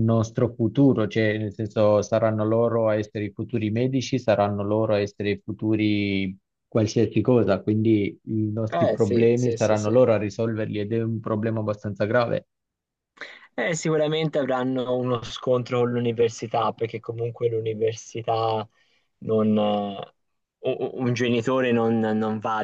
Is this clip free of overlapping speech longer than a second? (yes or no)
no